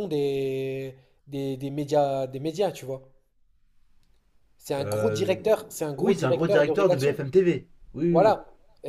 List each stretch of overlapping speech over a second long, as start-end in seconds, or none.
6.0-7.2